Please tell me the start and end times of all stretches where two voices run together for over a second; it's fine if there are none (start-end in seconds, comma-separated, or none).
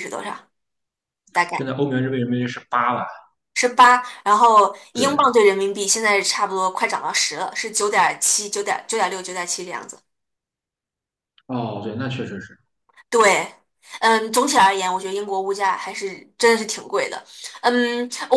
none